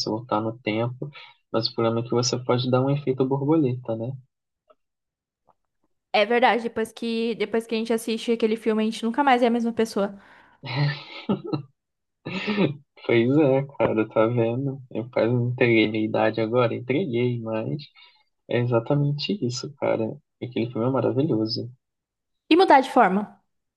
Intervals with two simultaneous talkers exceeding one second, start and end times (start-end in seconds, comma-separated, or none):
none